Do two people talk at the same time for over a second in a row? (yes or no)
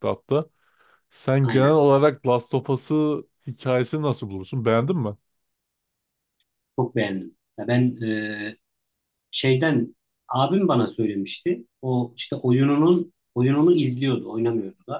no